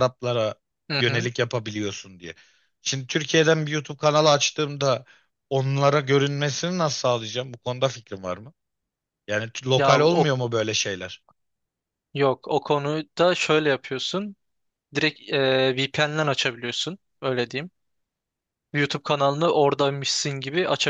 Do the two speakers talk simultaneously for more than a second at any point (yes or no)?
no